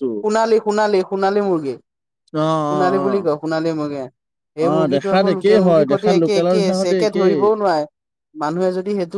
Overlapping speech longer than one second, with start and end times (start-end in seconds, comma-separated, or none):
4.7-7.3